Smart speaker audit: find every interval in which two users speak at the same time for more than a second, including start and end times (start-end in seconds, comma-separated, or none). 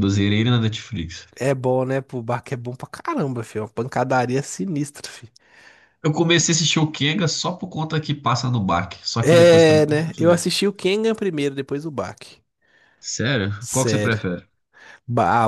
9.2-10.4